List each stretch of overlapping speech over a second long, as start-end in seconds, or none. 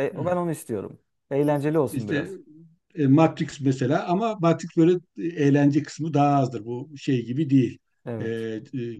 none